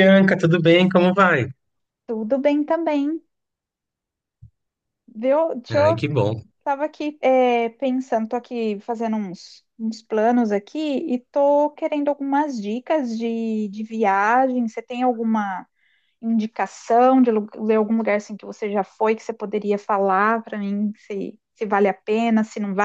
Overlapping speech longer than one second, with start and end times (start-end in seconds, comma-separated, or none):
none